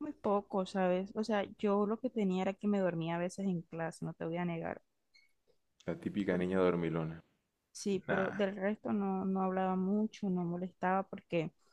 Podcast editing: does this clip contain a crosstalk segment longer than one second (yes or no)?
no